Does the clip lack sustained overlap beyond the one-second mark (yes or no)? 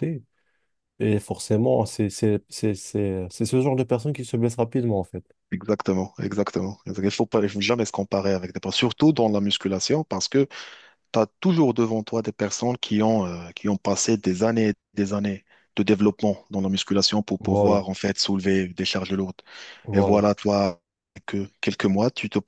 yes